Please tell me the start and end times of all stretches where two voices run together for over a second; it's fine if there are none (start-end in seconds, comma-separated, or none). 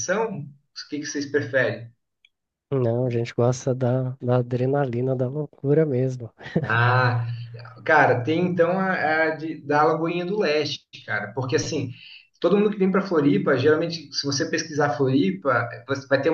none